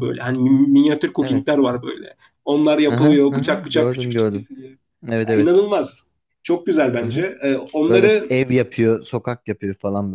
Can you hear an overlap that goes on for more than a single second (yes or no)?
yes